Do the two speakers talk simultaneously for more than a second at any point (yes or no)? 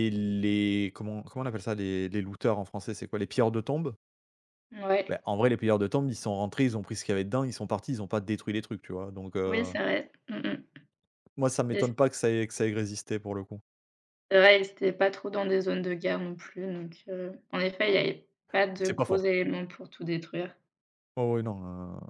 no